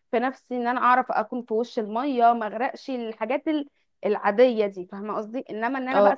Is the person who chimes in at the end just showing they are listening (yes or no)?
no